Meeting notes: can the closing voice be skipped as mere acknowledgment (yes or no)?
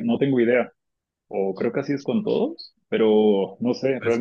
yes